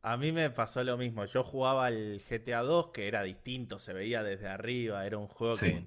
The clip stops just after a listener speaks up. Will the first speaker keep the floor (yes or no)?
yes